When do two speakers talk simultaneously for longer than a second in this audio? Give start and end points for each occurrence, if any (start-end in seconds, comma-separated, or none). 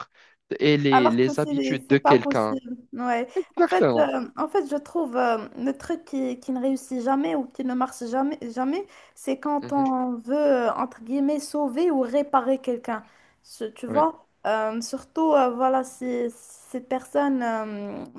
0.9-2.6